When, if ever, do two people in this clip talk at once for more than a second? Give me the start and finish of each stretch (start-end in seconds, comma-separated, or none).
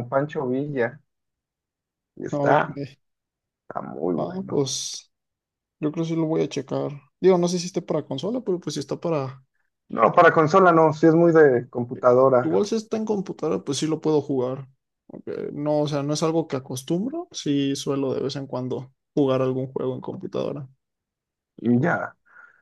none